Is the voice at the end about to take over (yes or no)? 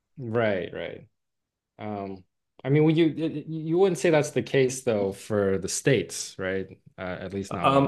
yes